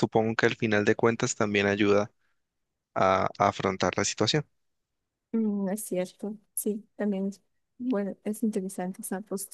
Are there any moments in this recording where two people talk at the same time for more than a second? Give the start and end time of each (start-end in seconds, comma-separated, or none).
none